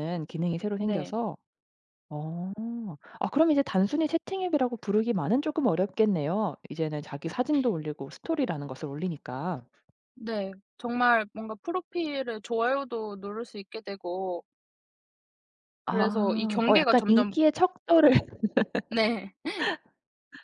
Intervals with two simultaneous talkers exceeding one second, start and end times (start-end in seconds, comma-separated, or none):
15.8-17.4